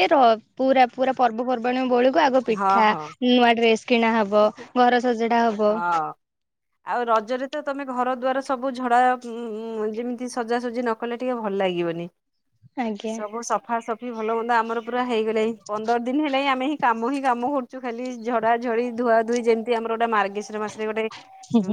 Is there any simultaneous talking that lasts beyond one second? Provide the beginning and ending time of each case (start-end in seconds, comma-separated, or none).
none